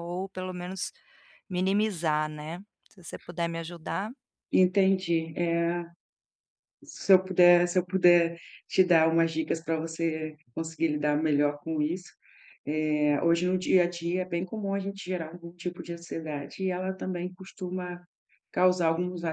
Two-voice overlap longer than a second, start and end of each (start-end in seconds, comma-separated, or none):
none